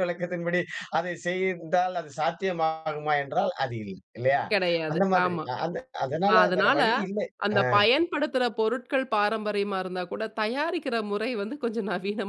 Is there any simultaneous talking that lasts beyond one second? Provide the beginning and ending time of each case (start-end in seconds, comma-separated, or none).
none